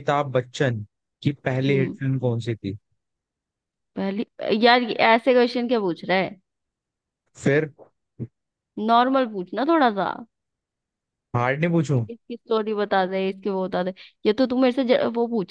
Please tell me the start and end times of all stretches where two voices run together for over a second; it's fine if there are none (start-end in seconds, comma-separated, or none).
none